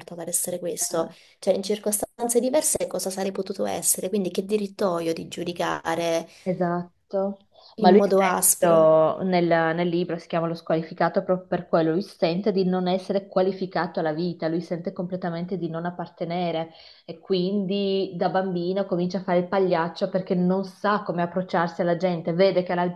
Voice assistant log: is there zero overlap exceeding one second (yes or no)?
no